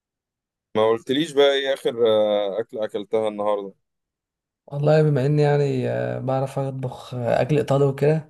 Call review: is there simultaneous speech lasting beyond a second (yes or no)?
no